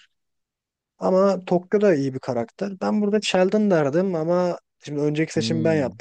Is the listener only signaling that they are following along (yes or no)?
yes